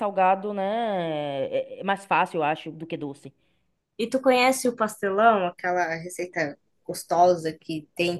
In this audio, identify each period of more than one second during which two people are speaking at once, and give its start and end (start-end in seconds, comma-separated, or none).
none